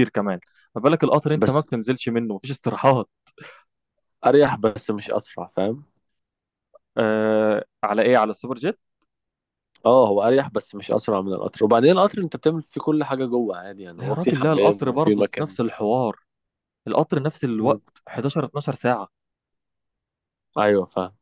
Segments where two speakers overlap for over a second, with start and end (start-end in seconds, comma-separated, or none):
14.0-15.6